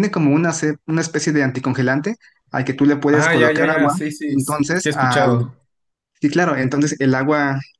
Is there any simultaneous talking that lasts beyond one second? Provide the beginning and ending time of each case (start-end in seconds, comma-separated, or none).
3.1-5.3